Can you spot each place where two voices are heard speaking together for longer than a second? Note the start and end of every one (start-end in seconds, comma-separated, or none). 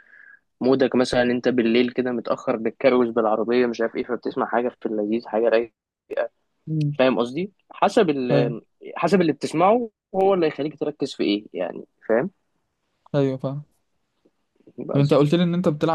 none